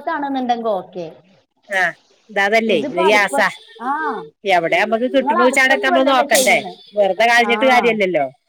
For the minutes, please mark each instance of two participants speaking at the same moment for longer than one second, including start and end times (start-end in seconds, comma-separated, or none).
5.2-6.6